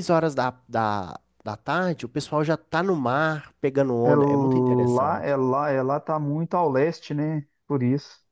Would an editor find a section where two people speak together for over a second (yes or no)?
yes